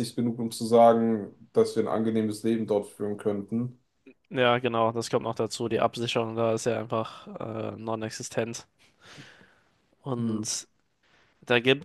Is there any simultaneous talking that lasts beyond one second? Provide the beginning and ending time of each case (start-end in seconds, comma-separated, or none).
none